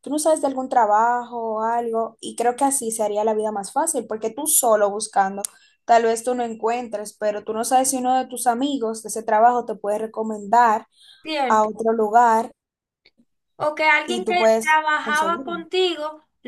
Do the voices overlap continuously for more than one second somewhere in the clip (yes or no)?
yes